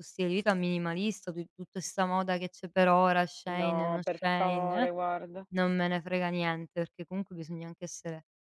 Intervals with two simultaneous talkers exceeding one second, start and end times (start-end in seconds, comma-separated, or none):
3.5-4.9